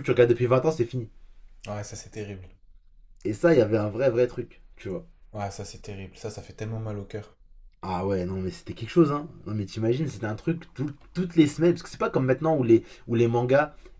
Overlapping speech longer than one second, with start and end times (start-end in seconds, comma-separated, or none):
none